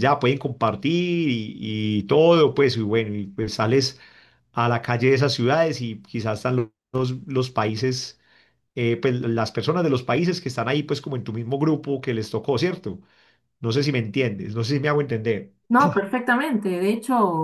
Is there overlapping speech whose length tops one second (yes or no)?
no